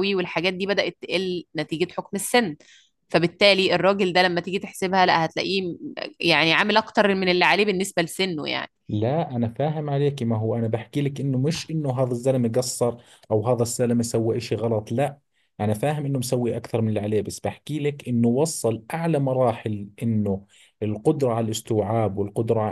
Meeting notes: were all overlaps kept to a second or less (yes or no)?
yes